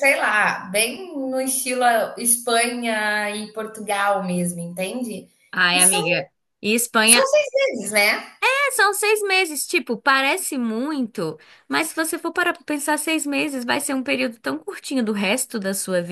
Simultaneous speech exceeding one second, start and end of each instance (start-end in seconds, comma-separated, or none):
none